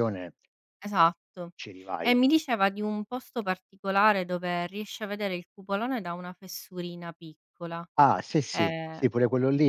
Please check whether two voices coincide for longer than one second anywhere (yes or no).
no